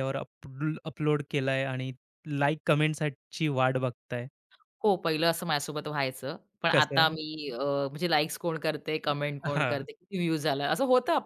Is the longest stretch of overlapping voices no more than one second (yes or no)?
yes